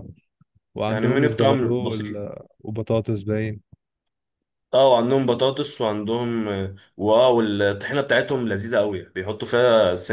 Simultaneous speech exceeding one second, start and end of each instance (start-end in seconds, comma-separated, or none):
0.9-2.2